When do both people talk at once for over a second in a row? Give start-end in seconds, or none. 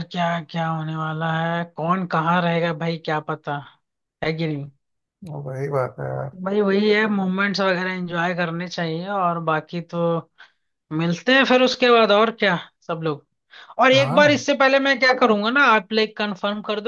none